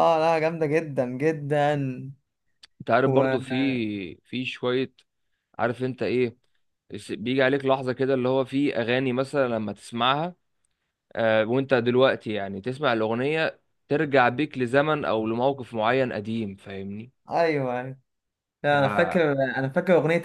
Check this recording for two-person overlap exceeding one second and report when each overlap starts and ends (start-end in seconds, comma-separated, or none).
none